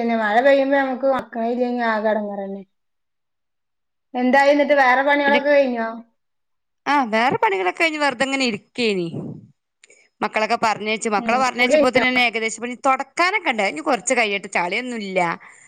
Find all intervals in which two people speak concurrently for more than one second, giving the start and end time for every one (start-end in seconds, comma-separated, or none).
none